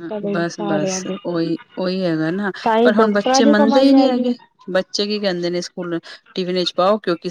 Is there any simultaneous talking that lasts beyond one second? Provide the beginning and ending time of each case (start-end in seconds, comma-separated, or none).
2.6-4.3